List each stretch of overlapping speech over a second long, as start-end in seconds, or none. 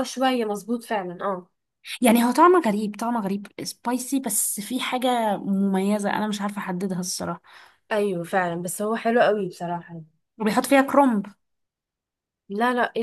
none